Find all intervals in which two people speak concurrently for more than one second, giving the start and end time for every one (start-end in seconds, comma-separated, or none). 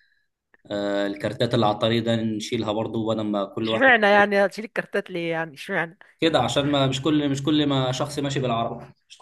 none